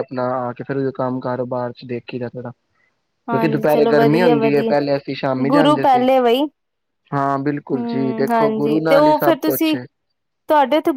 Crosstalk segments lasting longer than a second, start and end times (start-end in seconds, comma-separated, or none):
3.3-4.7, 7.7-9.8